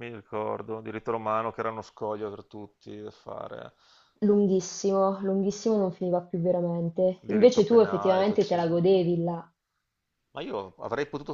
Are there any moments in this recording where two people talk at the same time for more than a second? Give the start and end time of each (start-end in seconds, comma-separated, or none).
7.2-9.0